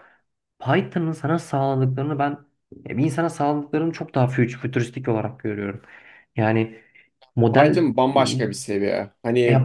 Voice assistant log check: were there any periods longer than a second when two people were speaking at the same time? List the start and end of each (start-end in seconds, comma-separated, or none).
none